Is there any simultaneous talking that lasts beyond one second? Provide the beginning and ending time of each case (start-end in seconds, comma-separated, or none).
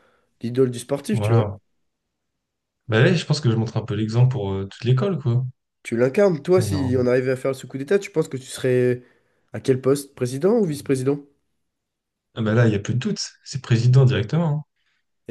none